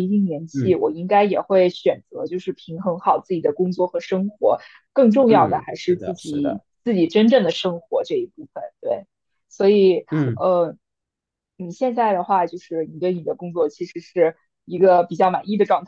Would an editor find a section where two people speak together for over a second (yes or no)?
yes